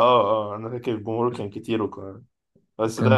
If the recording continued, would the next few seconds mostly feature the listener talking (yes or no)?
yes